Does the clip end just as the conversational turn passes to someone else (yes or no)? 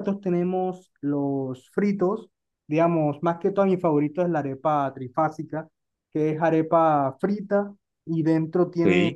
no